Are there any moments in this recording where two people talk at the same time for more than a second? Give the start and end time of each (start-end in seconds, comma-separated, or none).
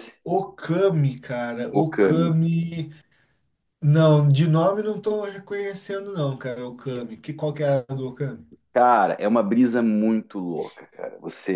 none